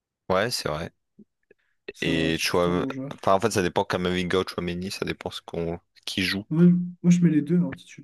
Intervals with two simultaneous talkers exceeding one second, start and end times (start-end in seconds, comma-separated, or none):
2.0-3.3